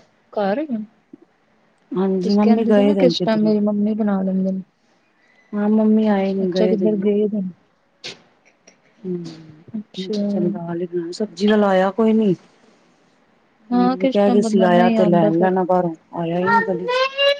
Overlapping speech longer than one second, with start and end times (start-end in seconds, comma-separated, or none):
2.2-3.5, 13.7-15.5